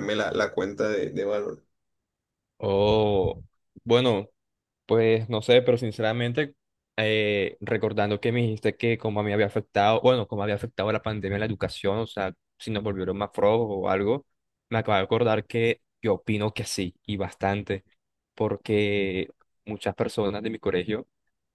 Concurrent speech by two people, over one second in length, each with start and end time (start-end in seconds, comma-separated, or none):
none